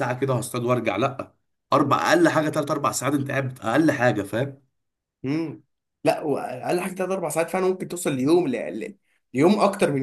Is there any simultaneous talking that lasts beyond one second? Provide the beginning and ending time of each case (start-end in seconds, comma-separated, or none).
none